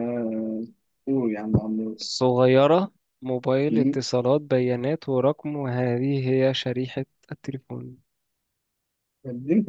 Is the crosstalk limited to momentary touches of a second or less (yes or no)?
yes